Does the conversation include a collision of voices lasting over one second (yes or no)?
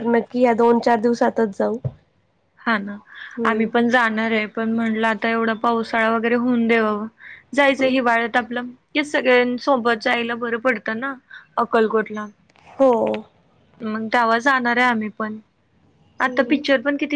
no